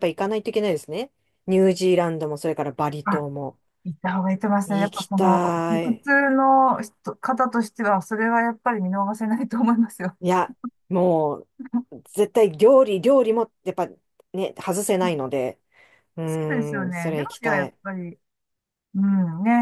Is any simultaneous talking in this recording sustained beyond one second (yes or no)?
yes